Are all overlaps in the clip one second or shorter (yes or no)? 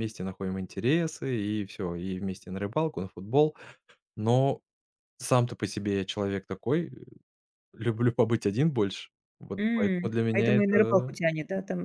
no